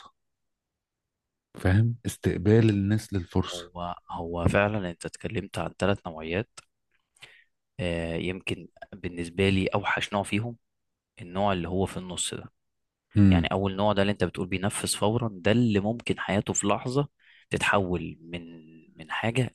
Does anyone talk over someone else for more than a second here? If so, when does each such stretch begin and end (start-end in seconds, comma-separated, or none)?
none